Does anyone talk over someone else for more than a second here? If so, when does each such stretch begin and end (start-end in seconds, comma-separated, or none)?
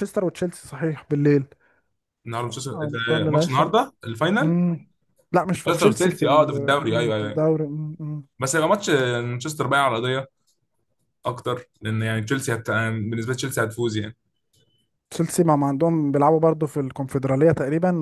2.5-3.7, 5.6-7.4